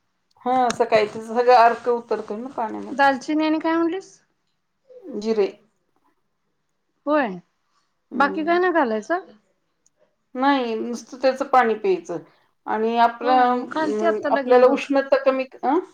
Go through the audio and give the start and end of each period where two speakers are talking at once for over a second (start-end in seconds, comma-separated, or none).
13.2-14.8